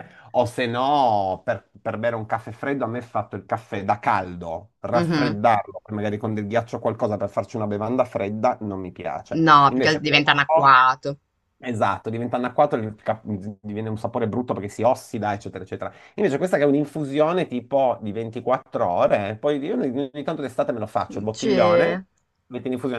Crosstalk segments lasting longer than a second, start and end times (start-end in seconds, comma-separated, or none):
9.4-10.9